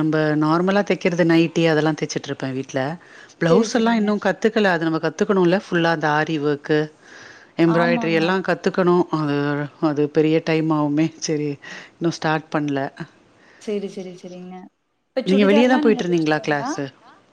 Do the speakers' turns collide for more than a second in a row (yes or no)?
yes